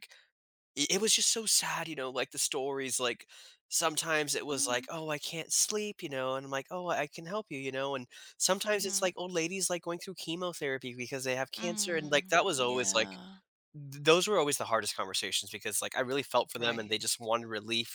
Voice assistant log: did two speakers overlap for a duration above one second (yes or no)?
yes